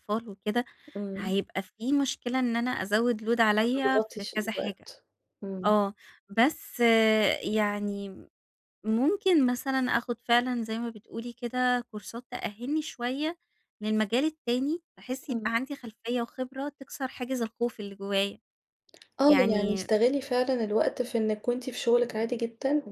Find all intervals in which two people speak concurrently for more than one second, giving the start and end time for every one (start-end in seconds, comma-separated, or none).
3.6-4.9